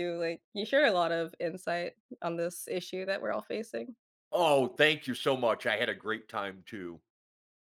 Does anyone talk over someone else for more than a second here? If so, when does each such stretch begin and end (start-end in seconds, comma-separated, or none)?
none